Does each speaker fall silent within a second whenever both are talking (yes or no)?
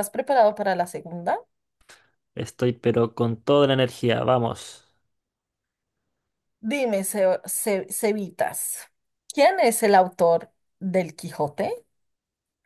yes